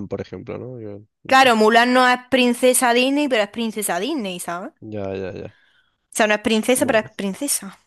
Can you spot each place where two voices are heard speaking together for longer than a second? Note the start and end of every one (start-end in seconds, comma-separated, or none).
none